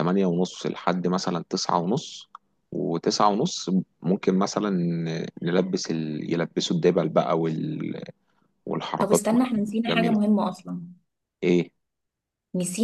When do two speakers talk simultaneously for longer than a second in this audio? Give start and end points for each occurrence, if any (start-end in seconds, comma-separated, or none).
9.0-10.2